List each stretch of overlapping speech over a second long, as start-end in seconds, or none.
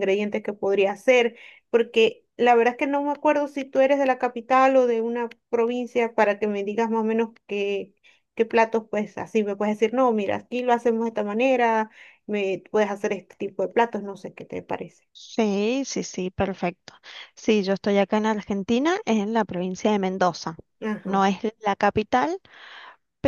none